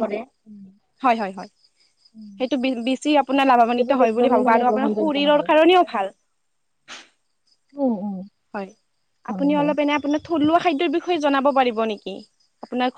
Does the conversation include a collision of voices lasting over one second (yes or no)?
yes